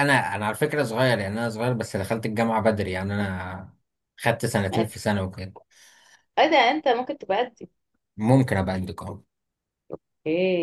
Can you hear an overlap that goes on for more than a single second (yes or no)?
no